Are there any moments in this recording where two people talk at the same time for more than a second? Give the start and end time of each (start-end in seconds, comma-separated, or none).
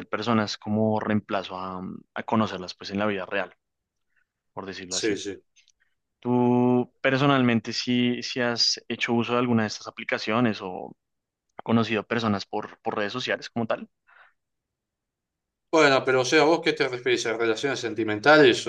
none